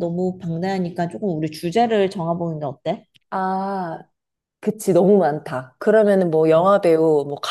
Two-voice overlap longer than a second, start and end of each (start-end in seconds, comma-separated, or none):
none